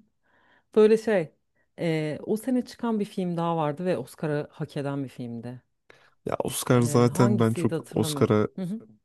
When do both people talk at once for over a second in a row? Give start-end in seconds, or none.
6.8-8.5